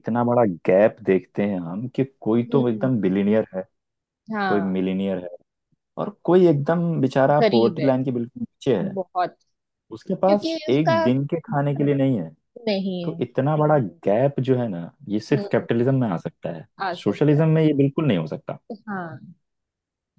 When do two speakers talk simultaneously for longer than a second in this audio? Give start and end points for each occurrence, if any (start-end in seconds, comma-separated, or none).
10.3-11.9